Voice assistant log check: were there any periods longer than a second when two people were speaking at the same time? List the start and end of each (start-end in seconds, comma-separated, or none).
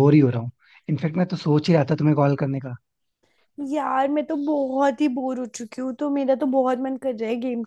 none